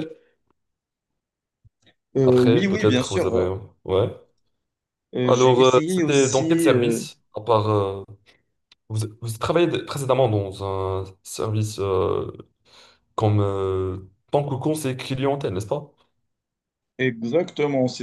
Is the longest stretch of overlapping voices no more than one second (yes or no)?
no